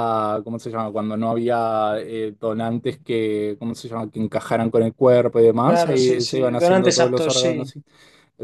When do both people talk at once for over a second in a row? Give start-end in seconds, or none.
5.6-7.7